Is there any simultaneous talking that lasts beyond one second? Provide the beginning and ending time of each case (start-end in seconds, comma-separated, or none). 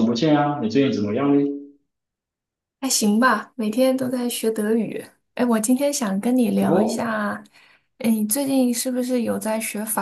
none